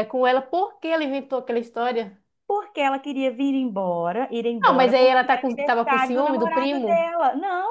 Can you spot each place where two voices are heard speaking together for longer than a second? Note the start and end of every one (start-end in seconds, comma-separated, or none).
4.6-7.1